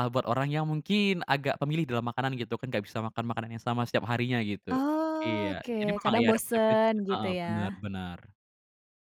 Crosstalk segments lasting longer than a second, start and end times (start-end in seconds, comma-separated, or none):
5.2-7.8